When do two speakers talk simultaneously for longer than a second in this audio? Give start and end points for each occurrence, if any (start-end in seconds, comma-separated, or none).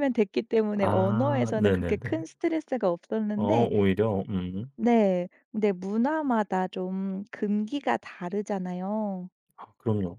0.8-2.2